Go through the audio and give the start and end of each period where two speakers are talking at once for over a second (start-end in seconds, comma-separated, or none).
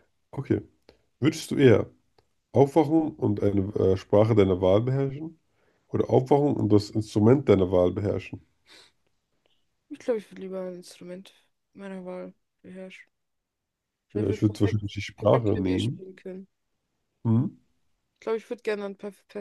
14.1-16.0